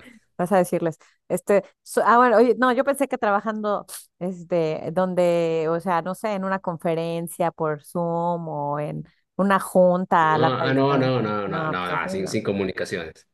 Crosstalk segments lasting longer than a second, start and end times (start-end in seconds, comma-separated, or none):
10.2-12.4